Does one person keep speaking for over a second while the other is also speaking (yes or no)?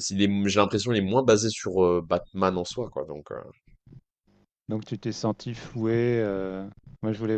no